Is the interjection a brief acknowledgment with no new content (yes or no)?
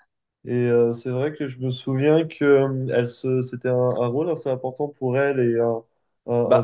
no